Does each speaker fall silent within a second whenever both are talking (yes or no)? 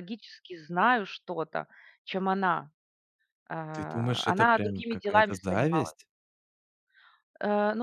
no